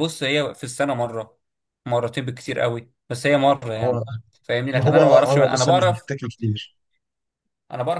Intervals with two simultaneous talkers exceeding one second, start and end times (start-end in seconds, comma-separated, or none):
4.7-6.1